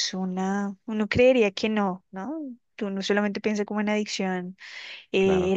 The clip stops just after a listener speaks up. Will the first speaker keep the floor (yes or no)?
yes